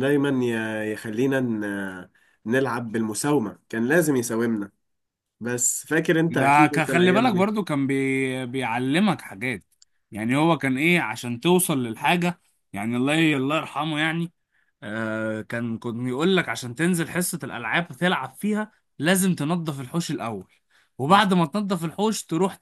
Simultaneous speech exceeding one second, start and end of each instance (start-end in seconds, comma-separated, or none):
6.3-7.5